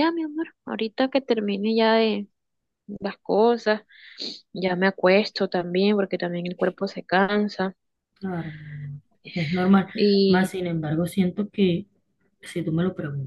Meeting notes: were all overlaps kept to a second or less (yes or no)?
yes